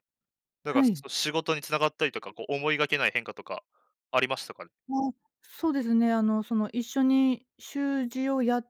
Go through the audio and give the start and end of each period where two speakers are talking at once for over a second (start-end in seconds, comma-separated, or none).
none